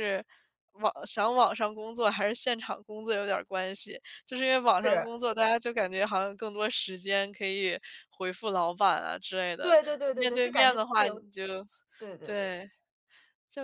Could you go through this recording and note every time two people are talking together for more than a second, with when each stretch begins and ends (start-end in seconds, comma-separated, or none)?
9.6-11.2